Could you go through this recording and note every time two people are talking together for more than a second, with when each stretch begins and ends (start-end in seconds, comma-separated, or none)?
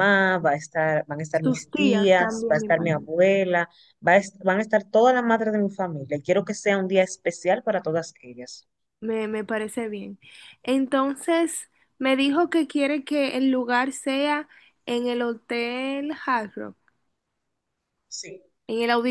1.3-3.1